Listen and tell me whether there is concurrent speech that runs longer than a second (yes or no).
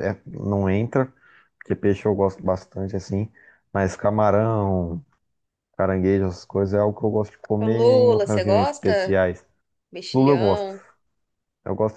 yes